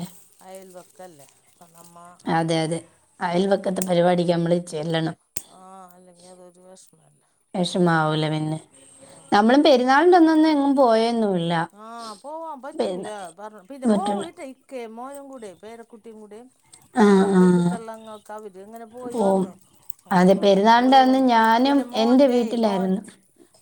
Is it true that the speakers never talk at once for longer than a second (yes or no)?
no